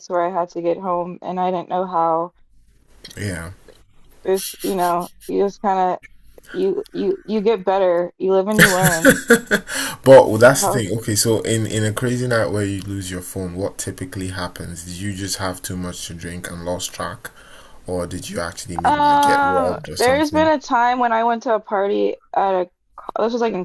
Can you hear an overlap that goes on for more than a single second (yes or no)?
yes